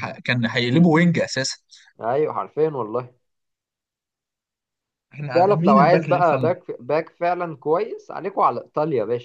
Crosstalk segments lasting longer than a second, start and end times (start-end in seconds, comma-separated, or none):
5.3-6.5